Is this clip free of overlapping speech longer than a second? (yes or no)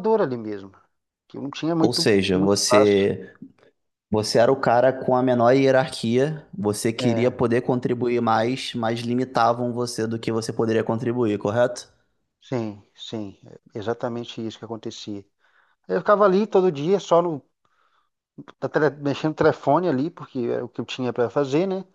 no